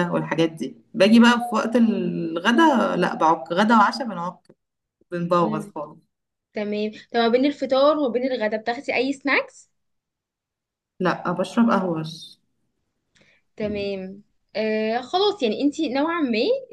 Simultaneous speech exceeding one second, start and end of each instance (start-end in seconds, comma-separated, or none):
none